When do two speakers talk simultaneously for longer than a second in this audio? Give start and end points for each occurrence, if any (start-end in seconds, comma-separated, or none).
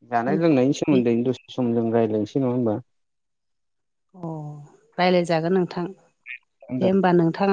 none